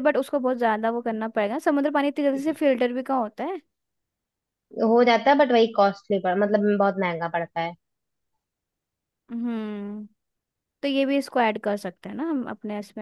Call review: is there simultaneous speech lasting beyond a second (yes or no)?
no